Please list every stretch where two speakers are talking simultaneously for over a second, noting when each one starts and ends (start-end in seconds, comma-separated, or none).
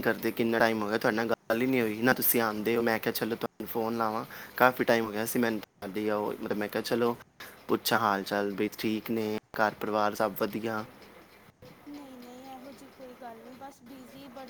none